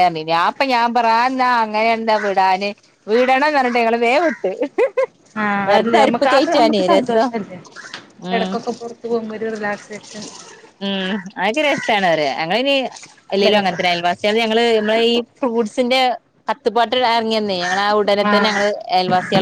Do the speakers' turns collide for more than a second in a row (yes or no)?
yes